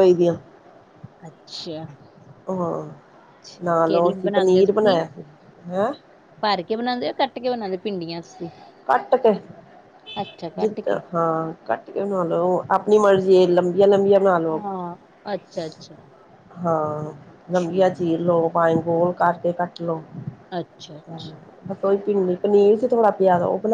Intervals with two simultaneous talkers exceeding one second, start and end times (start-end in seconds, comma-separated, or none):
3.6-5.0